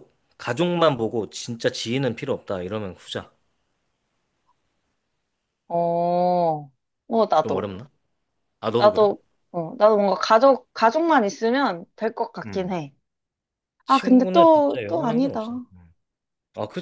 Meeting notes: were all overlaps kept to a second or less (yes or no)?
no